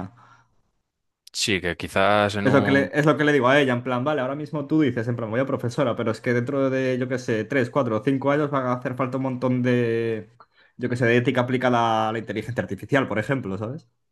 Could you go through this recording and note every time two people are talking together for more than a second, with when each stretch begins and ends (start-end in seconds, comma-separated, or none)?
none